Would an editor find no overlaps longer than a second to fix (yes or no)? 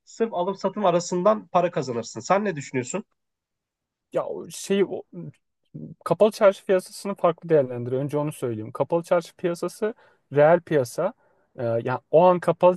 yes